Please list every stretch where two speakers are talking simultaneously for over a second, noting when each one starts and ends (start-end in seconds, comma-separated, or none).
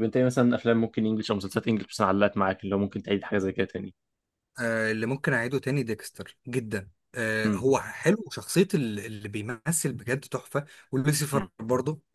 none